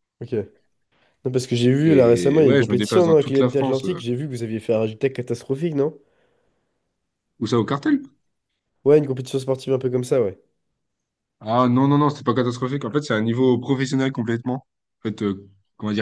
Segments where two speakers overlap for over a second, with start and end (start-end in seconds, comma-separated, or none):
1.8-4.0